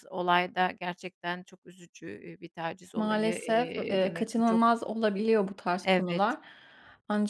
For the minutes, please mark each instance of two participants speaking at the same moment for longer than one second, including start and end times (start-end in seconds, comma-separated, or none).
2.9-4.6